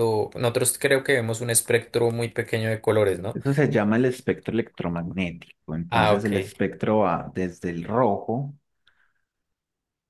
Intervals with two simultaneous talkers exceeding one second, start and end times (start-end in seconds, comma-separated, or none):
none